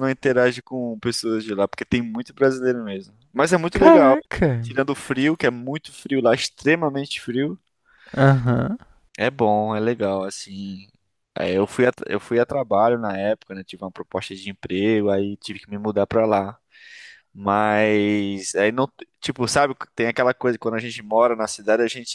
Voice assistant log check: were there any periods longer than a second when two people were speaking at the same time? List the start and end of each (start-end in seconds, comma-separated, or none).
none